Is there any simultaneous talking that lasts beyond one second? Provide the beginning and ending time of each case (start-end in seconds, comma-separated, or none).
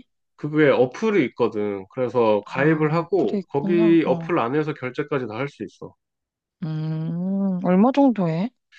2.5-4.3